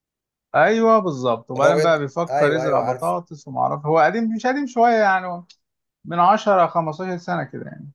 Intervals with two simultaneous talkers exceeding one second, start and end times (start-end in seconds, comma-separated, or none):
1.6-3.1